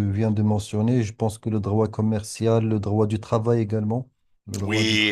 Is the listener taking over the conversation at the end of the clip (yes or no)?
yes